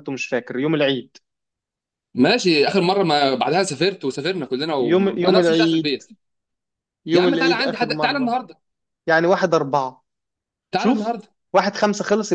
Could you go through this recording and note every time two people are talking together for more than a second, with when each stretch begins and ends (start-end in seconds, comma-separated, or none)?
4.8-6.0, 7.1-8.3